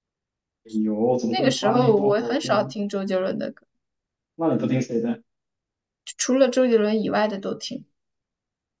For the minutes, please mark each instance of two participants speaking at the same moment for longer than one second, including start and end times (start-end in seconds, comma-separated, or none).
1.3-2.7